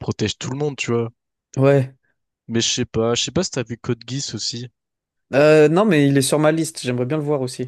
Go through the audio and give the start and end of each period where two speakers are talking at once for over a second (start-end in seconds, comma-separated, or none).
none